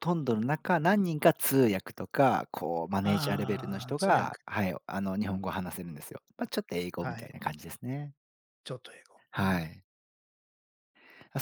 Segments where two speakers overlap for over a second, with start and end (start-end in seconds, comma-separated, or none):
3.0-4.4